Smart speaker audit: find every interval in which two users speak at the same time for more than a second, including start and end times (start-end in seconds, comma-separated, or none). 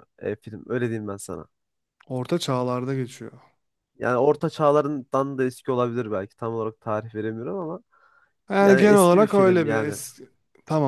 8.6-10.0